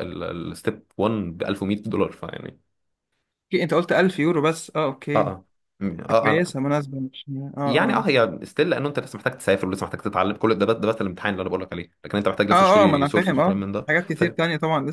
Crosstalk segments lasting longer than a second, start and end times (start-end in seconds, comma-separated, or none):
12.5-14.4